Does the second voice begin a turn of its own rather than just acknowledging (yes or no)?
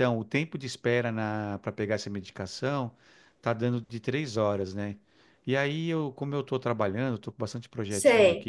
no